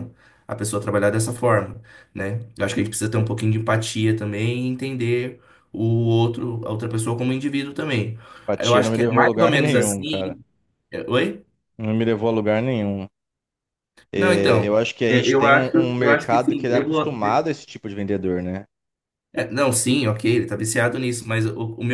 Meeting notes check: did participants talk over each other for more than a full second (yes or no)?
yes